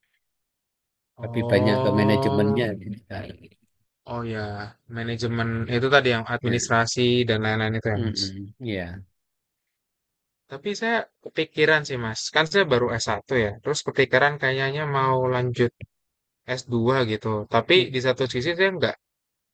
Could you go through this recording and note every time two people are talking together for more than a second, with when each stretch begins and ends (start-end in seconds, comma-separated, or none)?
1.2-2.7